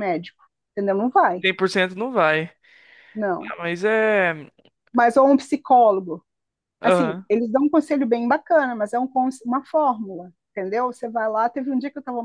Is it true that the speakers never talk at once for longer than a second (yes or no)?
yes